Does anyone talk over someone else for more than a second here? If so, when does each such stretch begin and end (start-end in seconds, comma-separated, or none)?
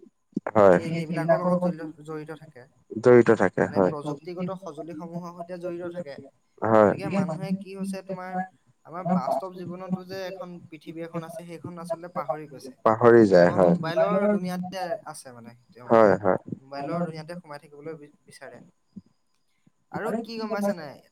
3.6-5.0